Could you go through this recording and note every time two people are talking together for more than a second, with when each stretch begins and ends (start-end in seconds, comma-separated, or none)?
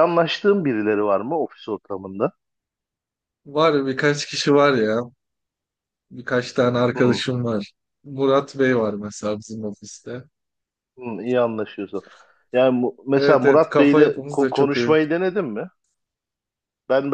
13.1-14.9